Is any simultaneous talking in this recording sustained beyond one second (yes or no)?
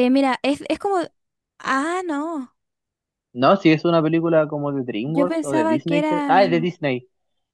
yes